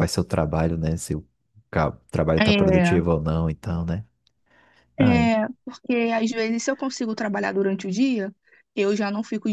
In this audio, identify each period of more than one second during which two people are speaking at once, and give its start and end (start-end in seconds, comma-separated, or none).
none